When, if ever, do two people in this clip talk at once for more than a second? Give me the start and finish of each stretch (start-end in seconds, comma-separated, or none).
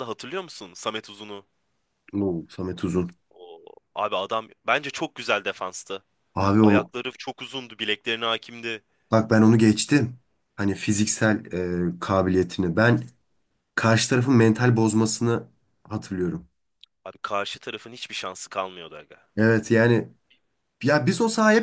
none